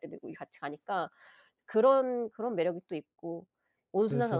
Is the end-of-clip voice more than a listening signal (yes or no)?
no